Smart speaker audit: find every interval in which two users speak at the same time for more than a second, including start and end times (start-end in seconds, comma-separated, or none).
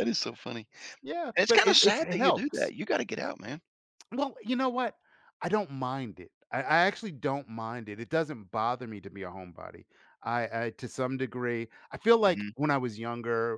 1.4-2.7